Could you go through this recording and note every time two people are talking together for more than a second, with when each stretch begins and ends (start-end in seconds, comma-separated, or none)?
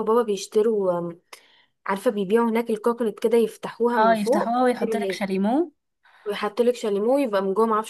none